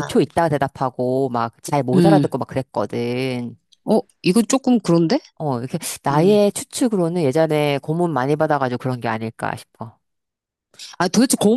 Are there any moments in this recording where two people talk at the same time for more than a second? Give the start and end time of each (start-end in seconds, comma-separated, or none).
none